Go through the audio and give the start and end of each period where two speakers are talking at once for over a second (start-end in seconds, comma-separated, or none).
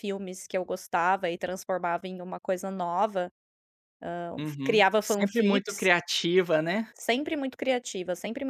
4.4-5.9